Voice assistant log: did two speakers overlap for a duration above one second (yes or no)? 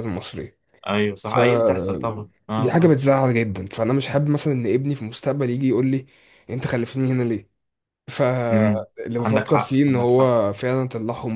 yes